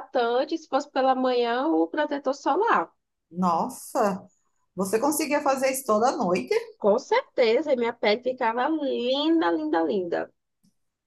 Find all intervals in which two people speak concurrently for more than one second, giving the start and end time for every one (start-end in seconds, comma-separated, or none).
none